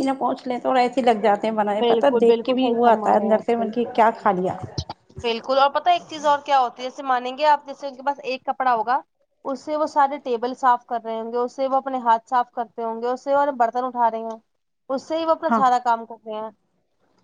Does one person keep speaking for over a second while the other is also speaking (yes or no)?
yes